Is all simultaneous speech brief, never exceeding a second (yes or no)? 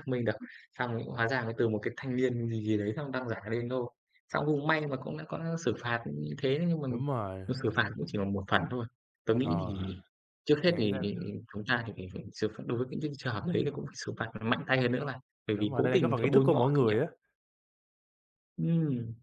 no